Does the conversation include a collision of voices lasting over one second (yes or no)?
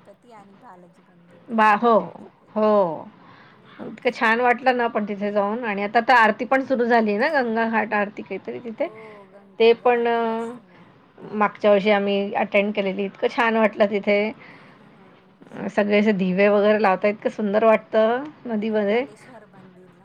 no